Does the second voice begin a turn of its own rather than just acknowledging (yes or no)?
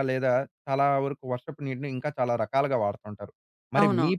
no